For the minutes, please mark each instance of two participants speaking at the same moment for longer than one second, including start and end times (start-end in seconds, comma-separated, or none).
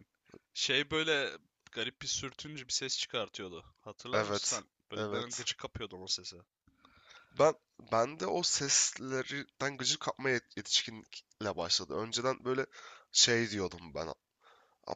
4.1-5.5